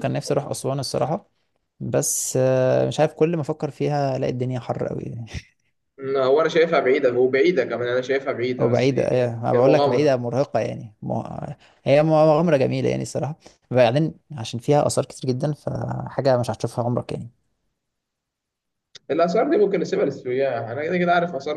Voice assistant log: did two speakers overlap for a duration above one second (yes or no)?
yes